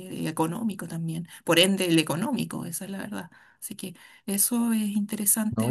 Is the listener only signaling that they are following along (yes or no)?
no